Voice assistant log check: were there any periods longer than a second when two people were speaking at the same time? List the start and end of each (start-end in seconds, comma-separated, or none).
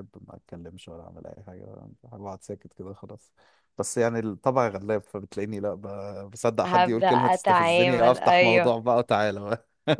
6.6-8.8